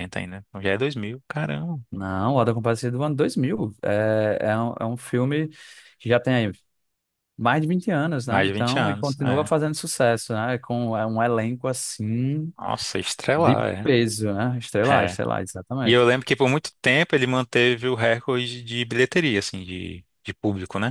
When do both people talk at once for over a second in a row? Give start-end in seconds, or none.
8.3-9.5